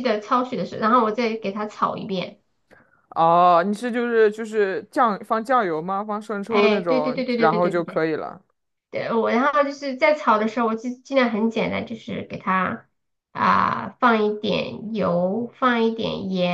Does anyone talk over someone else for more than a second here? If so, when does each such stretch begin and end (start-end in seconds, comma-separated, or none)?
6.5-8.0